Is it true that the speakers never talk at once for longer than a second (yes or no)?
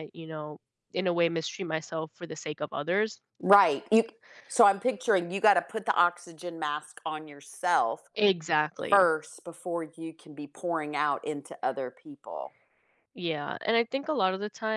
yes